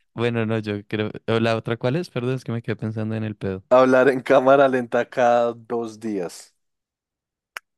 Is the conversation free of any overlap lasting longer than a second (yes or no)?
yes